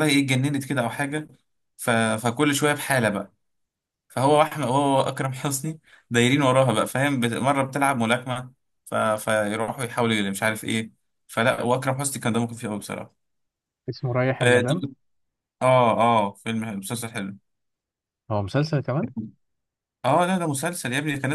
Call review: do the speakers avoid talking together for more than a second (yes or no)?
yes